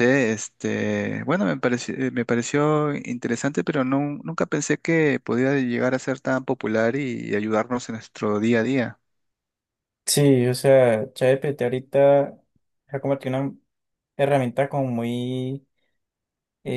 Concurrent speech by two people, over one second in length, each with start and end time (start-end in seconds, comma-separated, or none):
none